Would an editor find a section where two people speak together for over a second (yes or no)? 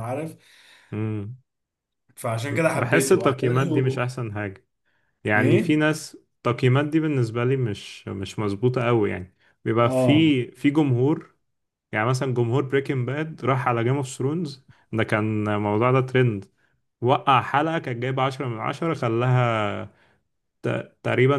yes